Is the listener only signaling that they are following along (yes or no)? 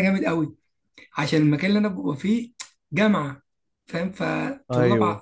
yes